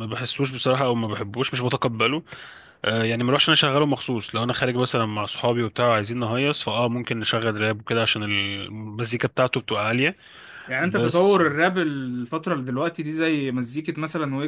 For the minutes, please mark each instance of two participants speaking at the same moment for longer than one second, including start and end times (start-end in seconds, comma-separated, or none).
none